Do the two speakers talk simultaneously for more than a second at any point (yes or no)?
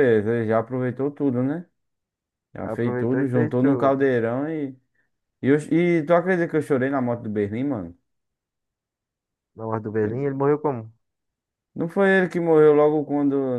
yes